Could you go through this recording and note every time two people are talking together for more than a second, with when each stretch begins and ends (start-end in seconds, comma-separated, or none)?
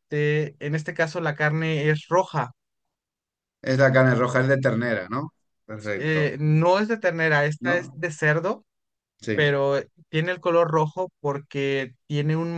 none